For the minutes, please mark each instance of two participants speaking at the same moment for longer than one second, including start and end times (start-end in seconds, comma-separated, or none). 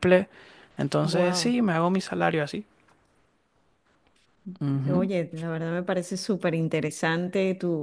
none